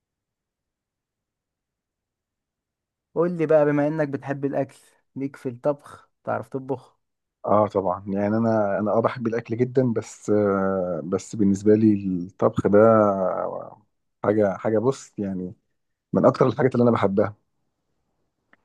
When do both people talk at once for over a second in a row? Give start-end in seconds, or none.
none